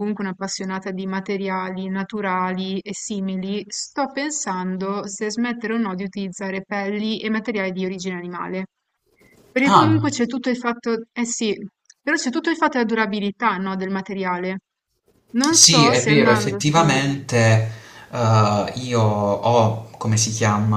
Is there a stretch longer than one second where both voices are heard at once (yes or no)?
yes